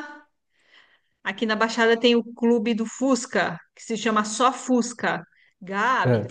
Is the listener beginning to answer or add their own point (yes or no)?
no